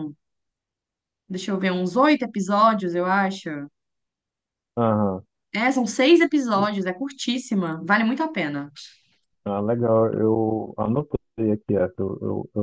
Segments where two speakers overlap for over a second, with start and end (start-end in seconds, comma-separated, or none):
none